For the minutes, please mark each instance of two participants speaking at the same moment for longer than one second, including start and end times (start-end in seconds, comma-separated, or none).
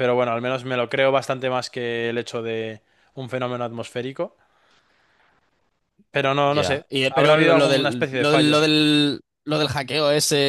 6.4-8.6